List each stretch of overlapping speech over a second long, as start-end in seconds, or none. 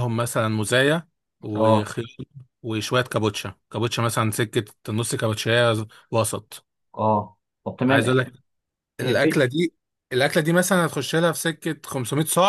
none